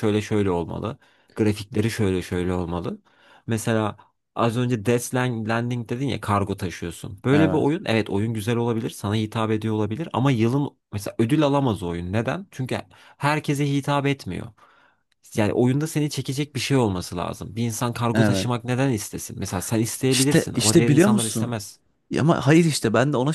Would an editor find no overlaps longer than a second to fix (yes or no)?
no